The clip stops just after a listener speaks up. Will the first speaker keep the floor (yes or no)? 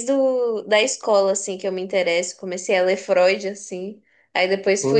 yes